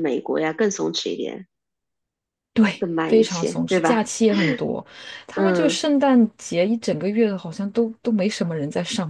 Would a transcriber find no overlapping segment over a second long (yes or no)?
no